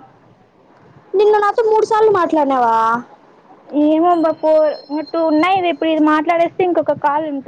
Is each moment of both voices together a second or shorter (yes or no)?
yes